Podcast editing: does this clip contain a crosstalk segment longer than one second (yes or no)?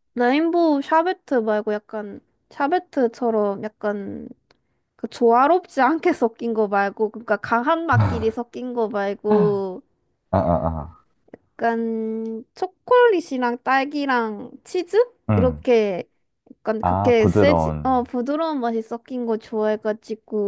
yes